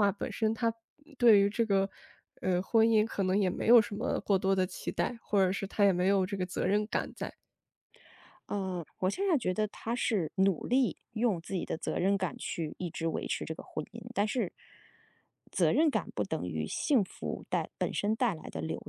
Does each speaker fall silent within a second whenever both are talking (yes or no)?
yes